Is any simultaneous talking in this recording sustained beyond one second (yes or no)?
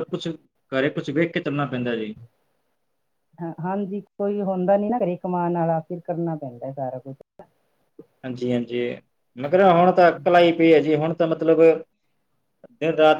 no